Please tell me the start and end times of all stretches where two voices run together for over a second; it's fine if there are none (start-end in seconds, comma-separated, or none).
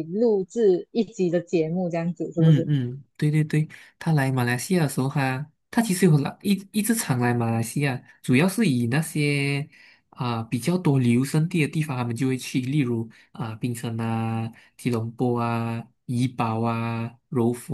none